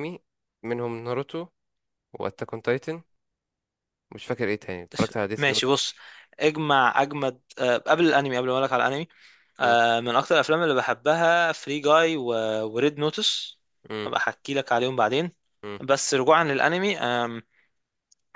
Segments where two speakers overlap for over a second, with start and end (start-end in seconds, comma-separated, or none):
none